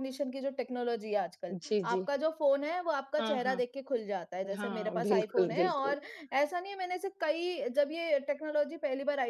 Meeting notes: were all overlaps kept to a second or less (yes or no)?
no